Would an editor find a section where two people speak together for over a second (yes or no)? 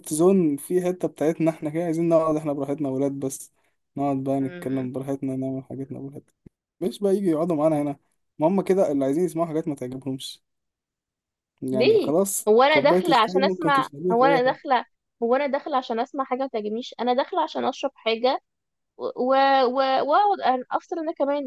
yes